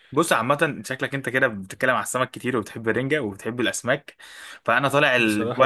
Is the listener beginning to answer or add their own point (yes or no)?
no